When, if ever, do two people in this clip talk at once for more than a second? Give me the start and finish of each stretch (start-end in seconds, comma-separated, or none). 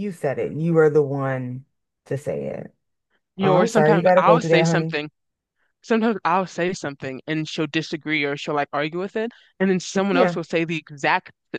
3.4-5.0